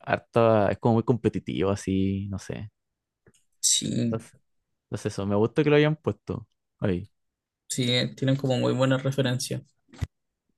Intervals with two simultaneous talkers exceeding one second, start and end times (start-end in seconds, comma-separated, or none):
none